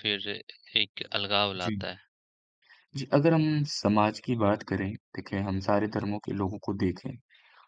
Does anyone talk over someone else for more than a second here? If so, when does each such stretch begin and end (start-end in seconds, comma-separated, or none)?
none